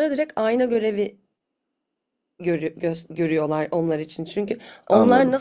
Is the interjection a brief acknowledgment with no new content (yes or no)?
yes